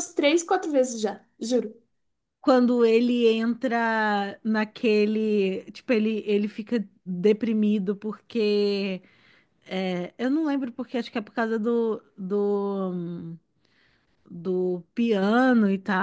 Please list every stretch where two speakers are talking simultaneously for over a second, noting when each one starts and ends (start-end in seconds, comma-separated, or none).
none